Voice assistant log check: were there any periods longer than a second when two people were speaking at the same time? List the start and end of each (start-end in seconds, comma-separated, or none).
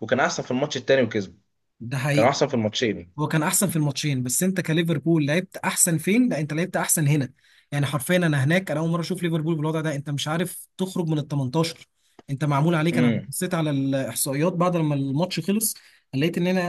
none